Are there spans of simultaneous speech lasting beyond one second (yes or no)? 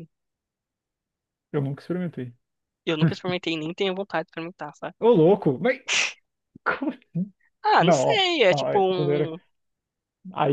yes